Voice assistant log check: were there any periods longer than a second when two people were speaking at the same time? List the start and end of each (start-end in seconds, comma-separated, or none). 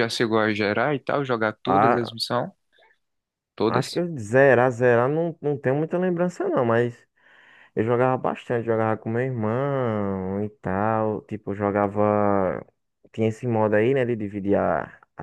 none